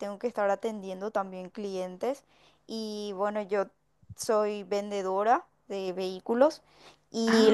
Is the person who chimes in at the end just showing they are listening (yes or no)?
yes